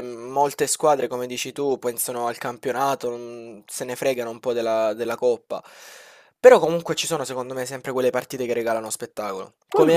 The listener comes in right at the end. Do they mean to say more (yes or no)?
no